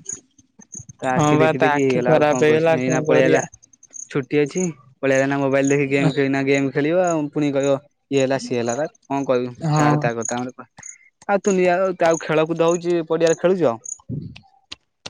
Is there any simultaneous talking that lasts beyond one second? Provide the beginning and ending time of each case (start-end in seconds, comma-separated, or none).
1.2-3.4